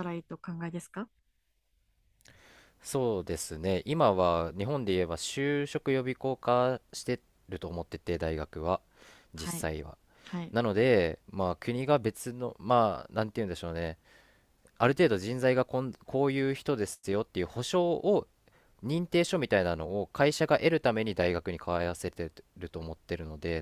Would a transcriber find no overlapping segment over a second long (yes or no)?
yes